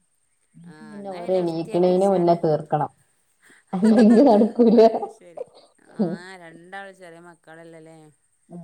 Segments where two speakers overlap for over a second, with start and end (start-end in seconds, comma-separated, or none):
0.9-2.4